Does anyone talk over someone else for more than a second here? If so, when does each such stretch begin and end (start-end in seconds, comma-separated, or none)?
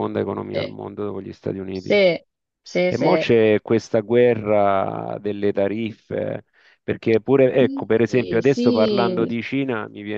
7.6-9.3